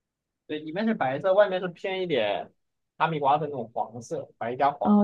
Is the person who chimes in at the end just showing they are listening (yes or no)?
no